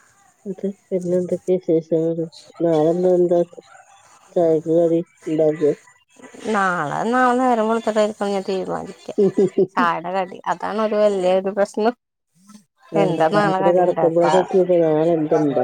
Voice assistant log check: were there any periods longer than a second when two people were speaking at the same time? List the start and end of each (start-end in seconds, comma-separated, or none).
13.0-14.3